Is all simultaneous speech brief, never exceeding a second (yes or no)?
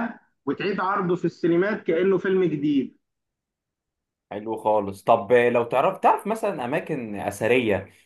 yes